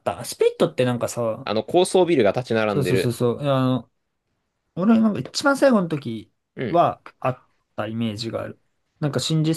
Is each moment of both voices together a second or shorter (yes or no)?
yes